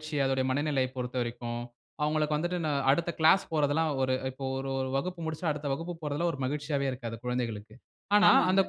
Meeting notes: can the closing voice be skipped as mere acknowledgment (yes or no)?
yes